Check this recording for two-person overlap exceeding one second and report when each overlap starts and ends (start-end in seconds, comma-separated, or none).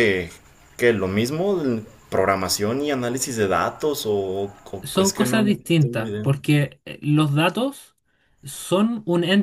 4.8-6.2